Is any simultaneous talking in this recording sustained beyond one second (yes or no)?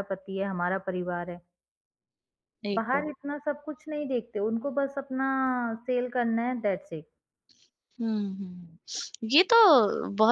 no